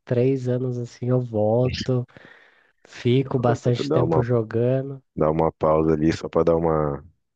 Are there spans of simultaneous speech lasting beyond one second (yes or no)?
no